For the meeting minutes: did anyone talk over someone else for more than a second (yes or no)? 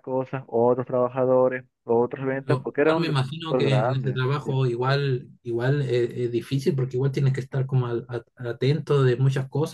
yes